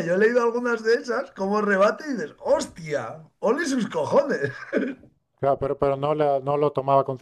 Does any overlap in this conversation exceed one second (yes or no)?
no